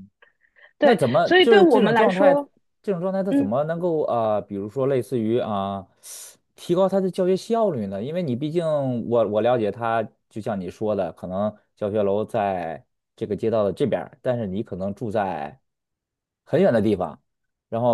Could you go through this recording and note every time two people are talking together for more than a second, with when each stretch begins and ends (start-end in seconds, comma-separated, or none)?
0.8-2.3